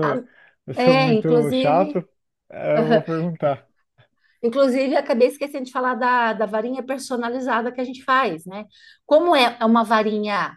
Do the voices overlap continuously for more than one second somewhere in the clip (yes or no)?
yes